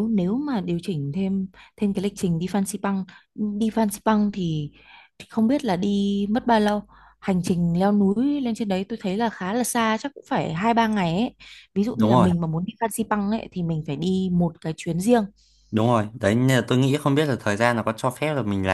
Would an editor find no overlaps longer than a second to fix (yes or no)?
yes